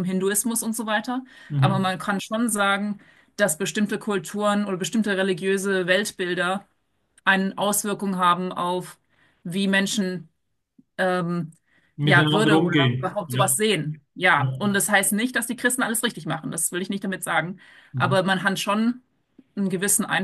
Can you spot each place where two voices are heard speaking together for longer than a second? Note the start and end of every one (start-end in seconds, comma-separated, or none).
12.0-13.6